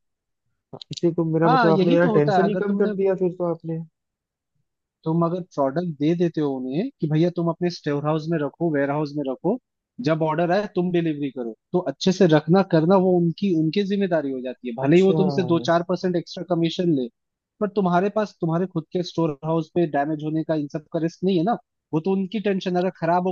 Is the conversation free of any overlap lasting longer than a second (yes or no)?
no